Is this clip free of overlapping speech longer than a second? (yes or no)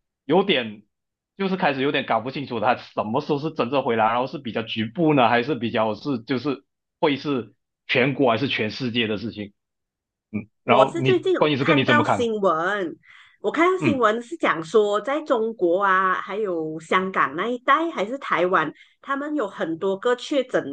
no